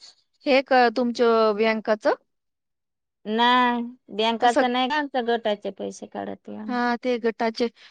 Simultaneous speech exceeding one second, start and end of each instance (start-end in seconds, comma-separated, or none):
none